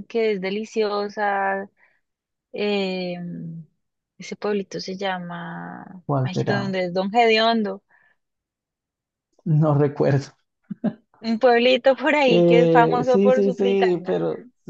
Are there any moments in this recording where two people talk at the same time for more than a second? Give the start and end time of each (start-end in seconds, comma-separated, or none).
12.3-14.2